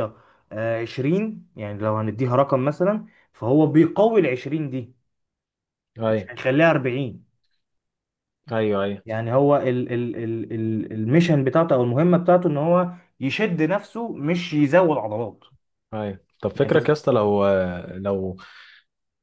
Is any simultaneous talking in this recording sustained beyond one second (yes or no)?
no